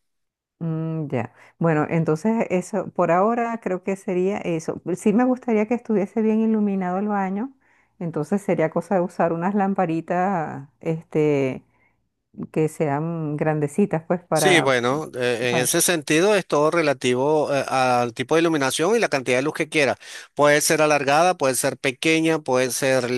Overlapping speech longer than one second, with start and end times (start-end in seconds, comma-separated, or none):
none